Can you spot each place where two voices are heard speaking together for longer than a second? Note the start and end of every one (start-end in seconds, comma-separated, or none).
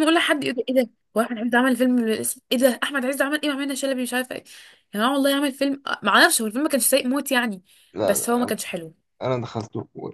none